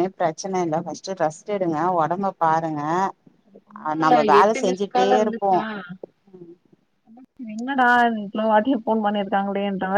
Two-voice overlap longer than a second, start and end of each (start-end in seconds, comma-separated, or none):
3.8-5.5